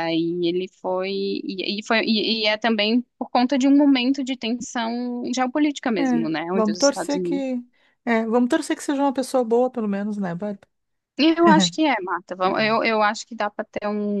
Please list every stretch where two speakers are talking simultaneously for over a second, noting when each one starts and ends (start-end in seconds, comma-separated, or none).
6.0-7.4